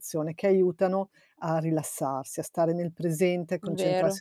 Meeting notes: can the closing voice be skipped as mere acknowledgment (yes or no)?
yes